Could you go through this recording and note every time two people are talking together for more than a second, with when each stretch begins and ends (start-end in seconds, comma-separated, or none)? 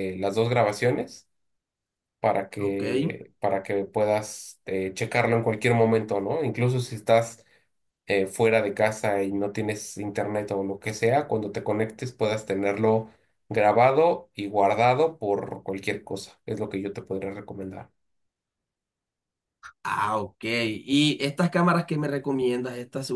none